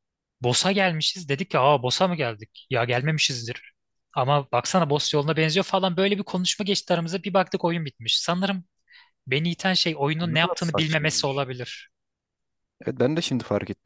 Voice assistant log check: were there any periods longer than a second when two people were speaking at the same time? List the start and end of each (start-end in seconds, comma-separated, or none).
10.2-11.4